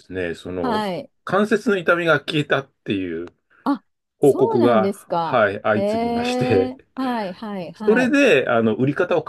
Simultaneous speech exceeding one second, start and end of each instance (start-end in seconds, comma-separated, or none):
4.2-6.7